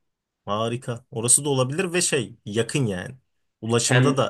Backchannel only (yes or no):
yes